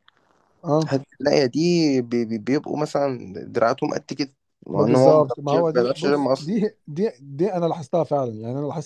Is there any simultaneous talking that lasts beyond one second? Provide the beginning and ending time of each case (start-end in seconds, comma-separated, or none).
4.7-6.5